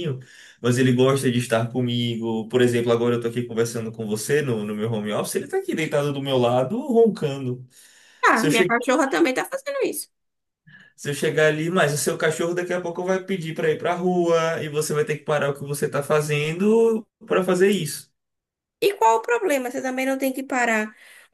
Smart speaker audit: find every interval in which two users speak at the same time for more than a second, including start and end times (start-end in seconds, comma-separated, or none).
none